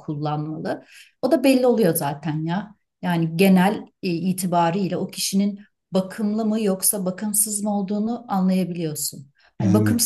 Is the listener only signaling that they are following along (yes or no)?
yes